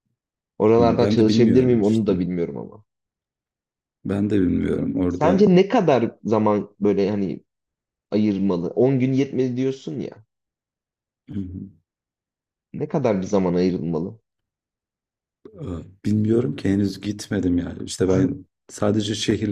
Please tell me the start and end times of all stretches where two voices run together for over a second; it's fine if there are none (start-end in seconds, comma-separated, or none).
0.8-2.1